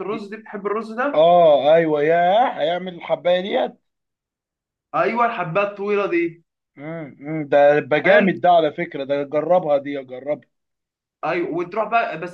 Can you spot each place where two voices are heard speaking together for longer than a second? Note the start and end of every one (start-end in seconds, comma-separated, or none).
none